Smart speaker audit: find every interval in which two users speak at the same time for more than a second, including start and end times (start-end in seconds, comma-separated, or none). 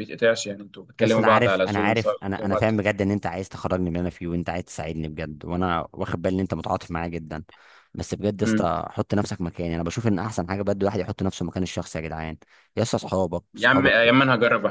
1.0-2.7